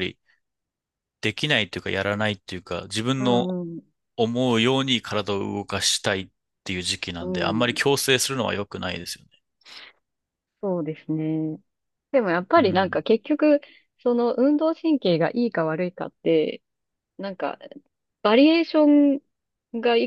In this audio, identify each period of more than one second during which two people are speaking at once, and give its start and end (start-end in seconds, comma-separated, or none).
none